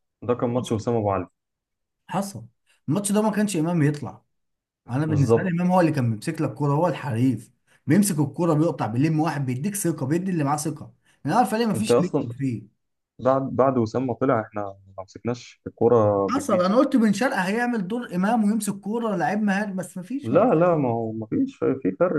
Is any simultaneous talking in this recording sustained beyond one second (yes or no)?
no